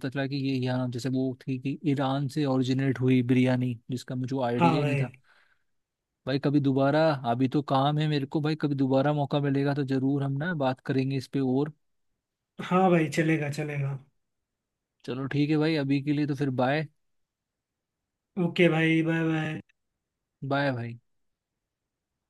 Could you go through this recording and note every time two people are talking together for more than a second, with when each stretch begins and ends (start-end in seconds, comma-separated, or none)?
none